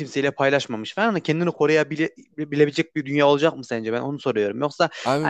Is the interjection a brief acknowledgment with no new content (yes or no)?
yes